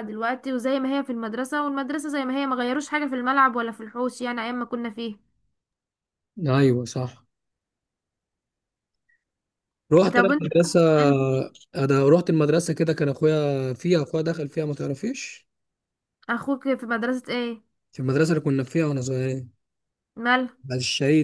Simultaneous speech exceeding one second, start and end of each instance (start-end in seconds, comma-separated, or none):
none